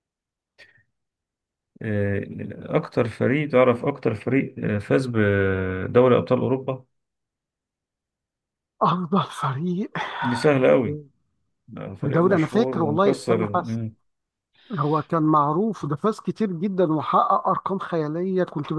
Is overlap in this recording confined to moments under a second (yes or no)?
no